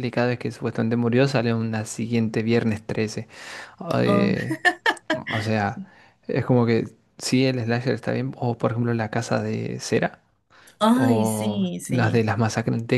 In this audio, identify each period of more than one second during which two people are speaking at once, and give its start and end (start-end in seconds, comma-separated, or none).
10.9-12.2